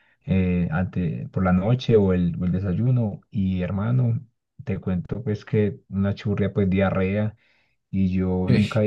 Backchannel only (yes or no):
yes